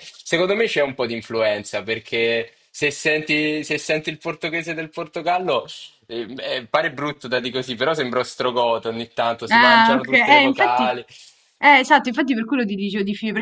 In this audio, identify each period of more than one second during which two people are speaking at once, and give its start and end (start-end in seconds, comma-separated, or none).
9.5-10.8